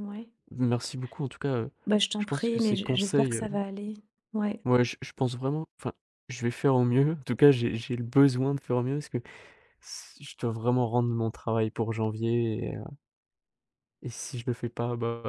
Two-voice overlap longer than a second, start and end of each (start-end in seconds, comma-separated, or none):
2.2-3.4